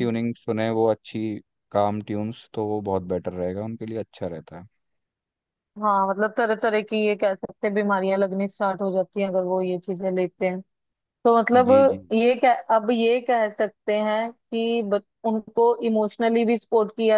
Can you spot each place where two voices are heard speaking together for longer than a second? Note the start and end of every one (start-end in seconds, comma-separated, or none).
none